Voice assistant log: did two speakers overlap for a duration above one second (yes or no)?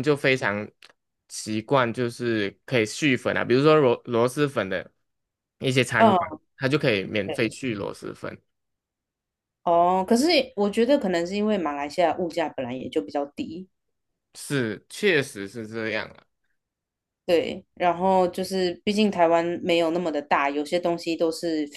no